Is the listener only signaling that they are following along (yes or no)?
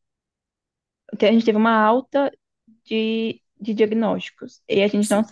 yes